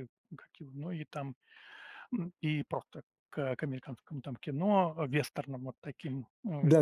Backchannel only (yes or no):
no